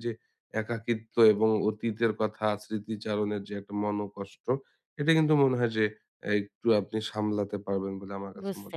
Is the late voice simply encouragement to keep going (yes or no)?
no